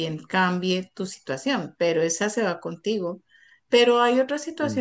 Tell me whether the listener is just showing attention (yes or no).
yes